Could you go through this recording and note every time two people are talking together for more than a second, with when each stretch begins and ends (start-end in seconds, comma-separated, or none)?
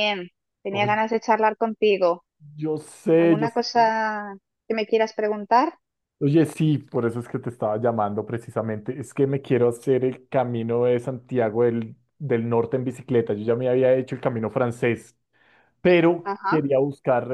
none